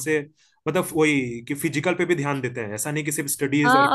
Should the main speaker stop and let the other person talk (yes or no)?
yes